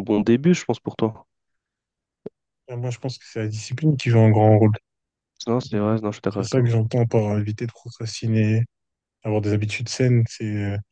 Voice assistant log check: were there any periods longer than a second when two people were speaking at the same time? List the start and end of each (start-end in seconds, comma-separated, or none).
none